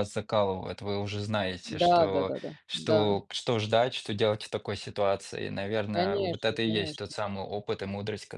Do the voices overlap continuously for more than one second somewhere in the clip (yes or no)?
yes